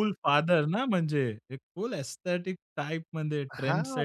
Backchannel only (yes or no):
no